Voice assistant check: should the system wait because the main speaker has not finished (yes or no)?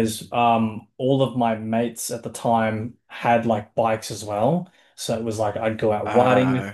yes